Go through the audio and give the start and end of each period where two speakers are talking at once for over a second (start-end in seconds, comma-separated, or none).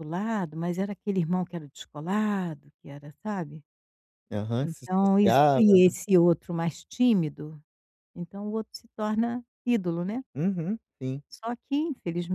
4.6-5.9